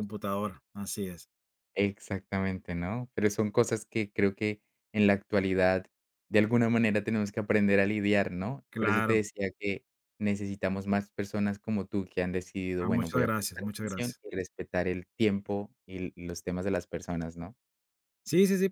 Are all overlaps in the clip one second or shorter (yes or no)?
no